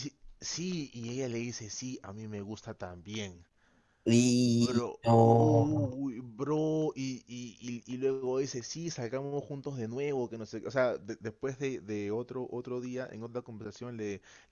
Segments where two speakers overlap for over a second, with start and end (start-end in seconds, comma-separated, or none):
4.6-6.0